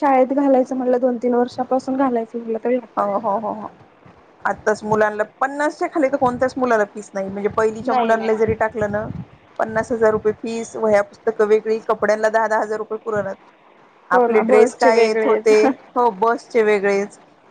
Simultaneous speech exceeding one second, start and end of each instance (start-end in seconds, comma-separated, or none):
14.2-15.5